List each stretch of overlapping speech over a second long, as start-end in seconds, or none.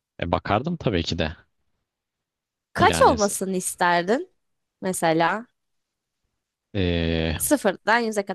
none